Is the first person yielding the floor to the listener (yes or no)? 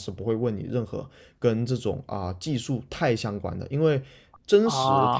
no